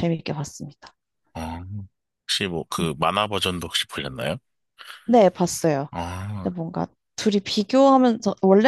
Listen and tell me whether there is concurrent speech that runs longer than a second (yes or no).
no